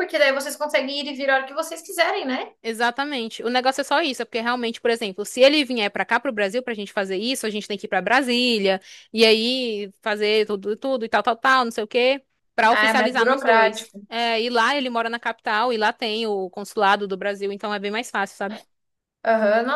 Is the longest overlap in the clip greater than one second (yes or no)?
yes